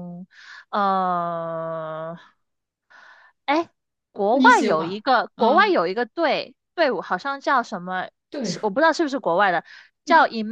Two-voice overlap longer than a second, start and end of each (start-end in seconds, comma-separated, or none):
4.3-5.8